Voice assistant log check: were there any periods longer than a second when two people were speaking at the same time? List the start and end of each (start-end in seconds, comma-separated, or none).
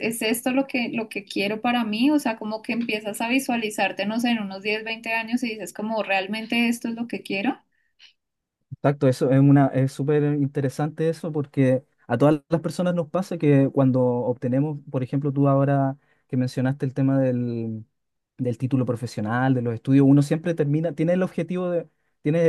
none